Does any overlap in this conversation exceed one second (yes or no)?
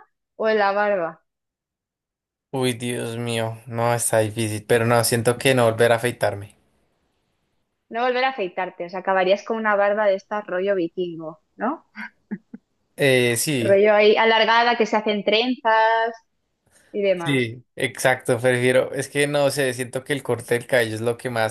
no